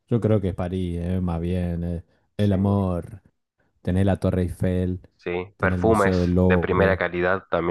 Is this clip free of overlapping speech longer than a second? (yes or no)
no